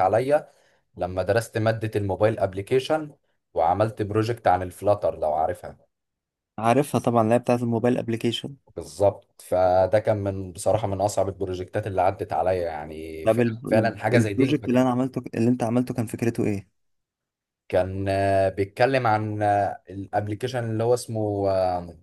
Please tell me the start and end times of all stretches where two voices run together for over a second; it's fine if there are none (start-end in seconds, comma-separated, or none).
13.2-14.6